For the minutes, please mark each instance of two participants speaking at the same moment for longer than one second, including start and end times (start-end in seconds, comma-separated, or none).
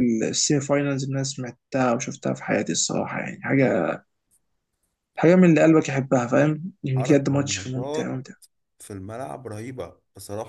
7.0-8.2